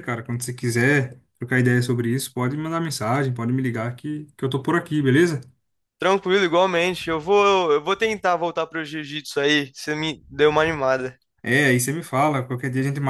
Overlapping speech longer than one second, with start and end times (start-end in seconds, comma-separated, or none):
none